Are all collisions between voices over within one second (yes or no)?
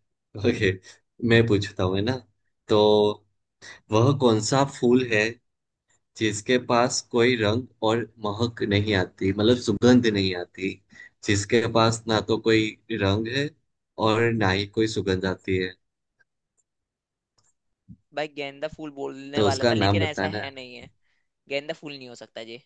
no